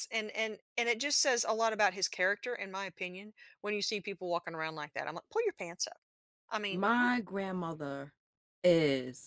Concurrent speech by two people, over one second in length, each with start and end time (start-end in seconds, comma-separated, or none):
none